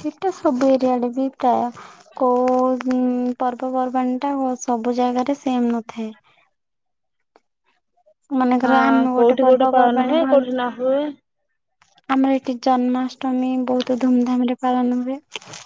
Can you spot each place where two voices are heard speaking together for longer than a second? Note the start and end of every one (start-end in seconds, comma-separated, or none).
8.7-10.6